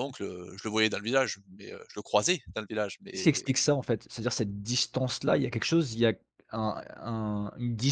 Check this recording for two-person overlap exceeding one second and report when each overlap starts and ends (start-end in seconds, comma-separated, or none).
none